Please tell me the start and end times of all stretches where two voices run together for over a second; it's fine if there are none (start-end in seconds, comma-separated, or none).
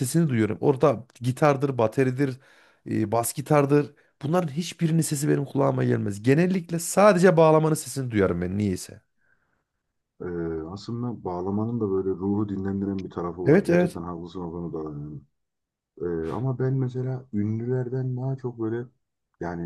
none